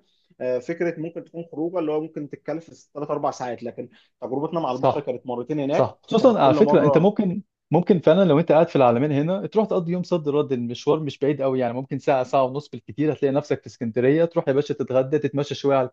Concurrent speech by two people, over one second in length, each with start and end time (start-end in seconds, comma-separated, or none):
5.7-7.1